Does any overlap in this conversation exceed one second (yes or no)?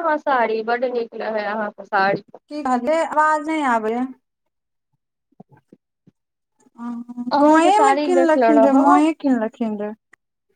yes